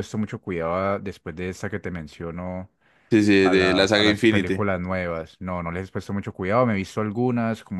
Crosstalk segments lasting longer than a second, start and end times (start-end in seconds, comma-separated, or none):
3.4-4.6